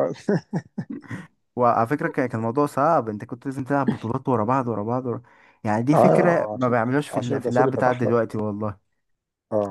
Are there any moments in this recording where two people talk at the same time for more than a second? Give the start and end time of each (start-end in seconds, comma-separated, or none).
5.9-8.2